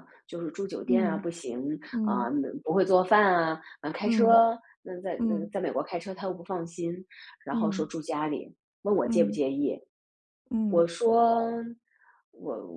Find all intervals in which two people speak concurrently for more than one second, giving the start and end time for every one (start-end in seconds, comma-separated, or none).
none